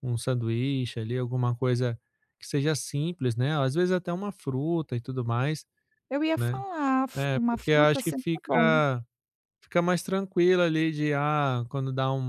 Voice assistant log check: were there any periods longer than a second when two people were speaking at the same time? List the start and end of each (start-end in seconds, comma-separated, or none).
7.2-8.8